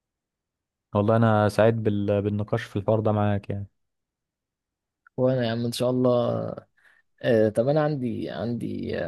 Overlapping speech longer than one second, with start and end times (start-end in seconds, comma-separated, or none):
none